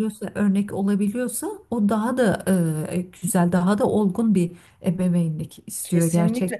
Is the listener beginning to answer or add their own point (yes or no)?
yes